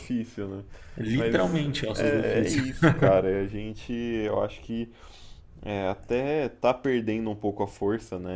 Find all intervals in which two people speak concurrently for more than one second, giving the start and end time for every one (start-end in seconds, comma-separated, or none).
1.1-2.6